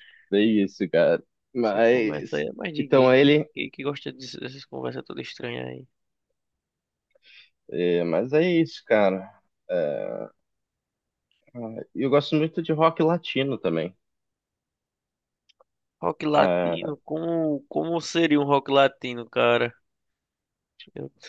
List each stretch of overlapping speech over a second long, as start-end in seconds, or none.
1.6-3.5